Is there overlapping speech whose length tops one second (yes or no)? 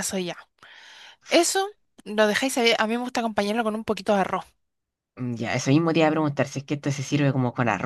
no